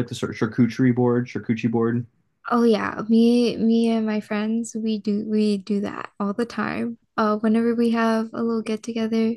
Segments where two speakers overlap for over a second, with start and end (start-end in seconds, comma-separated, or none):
none